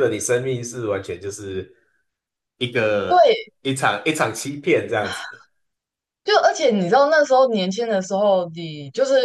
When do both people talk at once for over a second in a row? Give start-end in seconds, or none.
none